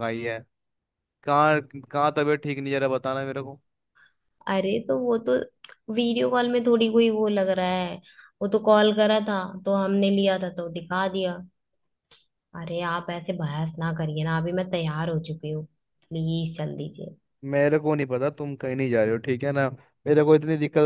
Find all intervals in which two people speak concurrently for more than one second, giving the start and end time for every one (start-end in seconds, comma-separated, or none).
none